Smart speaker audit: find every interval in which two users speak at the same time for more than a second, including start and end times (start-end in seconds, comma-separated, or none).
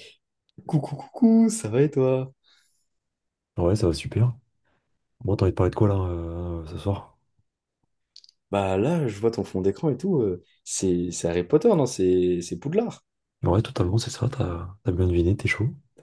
none